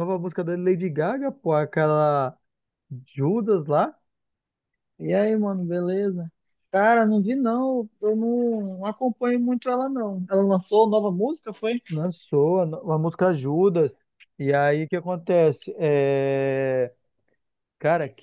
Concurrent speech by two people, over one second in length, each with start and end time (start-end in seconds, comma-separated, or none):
none